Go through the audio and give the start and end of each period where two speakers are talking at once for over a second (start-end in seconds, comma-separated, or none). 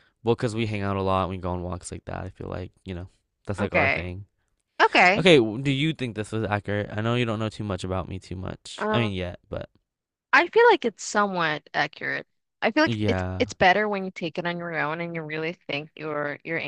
none